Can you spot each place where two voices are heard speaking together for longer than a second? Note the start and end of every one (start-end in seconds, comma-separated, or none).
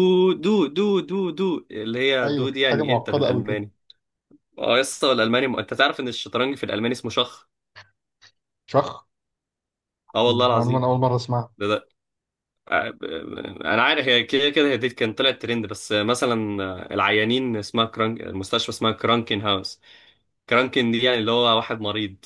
2.2-3.6